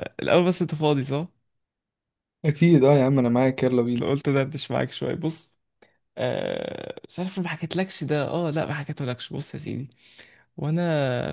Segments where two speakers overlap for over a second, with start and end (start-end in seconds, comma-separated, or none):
none